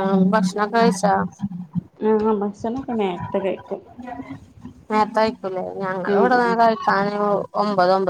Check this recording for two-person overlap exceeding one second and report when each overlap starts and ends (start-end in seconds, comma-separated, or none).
none